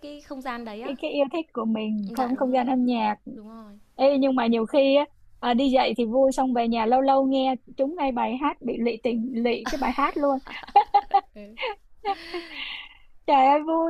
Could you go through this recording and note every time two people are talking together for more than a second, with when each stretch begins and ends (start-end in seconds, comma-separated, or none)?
none